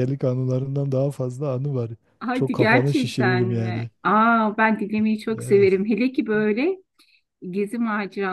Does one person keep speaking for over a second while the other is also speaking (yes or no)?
yes